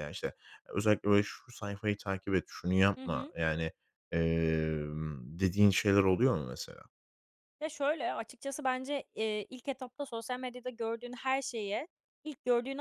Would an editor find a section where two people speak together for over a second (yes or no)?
no